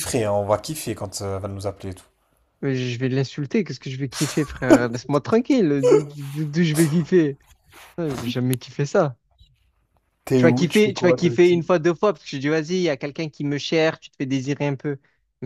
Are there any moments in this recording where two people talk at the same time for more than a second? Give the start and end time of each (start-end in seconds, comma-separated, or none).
10.4-11.6